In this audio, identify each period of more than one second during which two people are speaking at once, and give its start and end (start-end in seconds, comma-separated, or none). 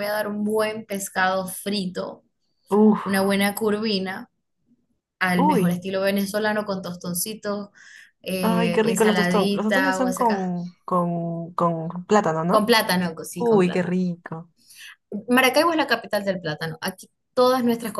8.4-10.5